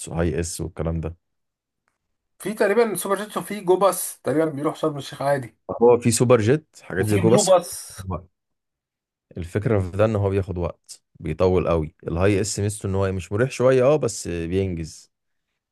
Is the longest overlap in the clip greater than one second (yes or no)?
no